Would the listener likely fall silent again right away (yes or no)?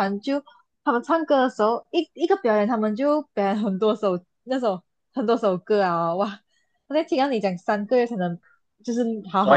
yes